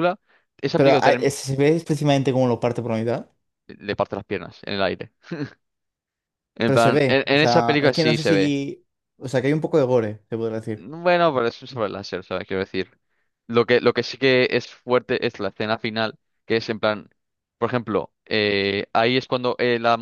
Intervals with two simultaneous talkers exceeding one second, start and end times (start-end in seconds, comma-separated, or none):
6.6-8.6